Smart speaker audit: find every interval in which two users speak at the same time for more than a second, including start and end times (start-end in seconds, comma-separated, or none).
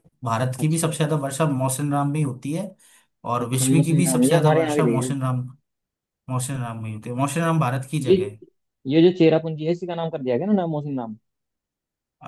3.5-5.1